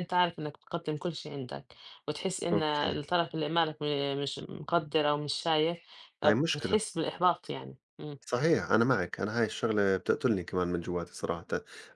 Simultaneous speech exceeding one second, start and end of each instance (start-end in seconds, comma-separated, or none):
none